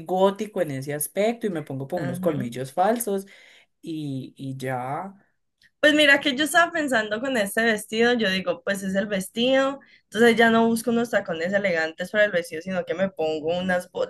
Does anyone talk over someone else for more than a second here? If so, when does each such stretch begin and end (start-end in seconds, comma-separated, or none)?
none